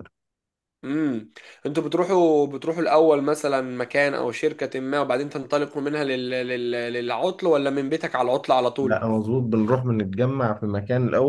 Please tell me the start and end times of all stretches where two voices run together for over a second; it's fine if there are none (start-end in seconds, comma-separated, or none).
none